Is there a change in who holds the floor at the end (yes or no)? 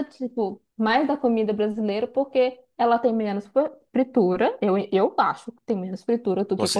no